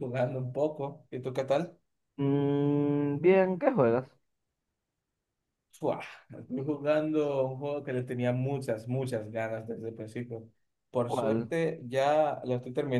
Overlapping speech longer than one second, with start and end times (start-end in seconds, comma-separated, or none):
none